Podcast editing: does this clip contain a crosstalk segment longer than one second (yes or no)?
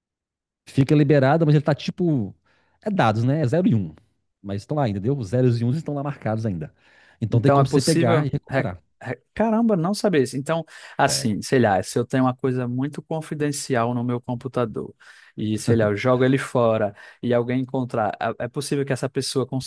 yes